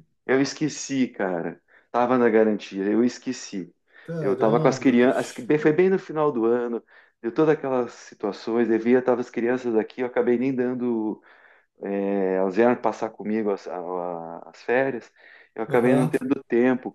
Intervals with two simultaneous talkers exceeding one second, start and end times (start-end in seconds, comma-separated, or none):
4.2-5.5